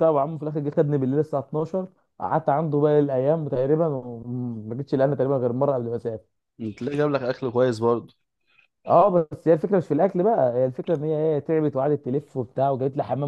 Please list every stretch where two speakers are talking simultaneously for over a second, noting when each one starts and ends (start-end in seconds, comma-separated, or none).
none